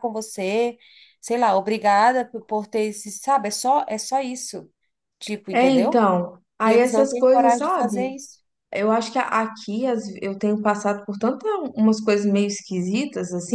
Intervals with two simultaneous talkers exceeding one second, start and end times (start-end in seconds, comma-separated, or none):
6.7-8.1